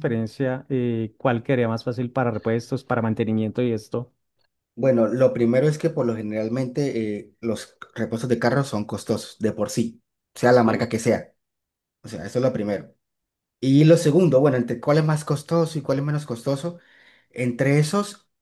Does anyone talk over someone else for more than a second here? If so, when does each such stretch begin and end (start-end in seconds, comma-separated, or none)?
none